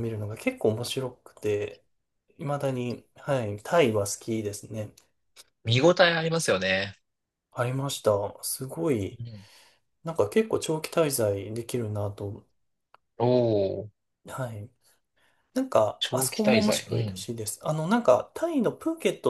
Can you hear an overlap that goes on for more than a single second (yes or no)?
yes